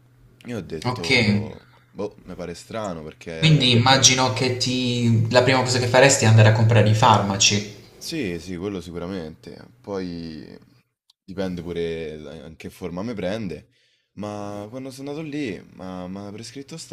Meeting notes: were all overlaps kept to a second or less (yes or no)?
yes